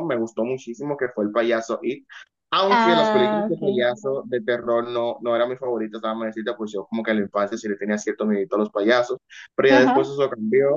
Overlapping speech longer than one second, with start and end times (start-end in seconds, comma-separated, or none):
2.7-4.0